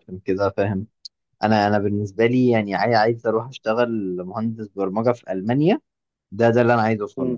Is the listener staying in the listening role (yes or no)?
yes